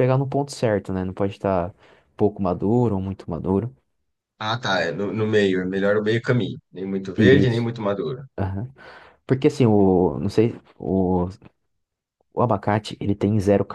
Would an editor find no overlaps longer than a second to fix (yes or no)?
yes